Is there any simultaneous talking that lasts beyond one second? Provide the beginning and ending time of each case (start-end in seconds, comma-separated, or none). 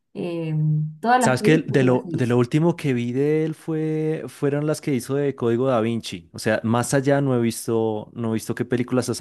1.2-2.4